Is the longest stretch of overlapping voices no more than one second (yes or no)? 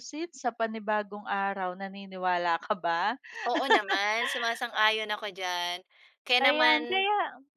yes